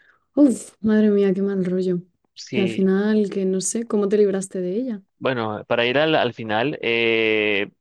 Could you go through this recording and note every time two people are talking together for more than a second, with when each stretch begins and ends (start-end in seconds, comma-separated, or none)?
none